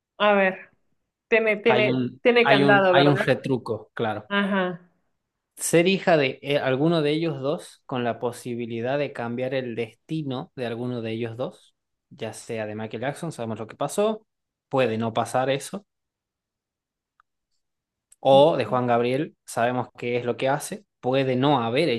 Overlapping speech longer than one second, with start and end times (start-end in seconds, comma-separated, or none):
1.7-3.4